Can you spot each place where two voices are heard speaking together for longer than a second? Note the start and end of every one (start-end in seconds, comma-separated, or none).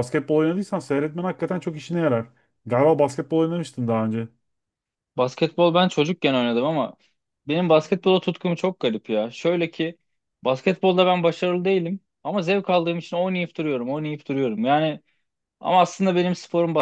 none